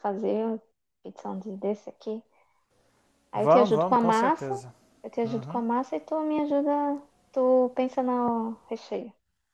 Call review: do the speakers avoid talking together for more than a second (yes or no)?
no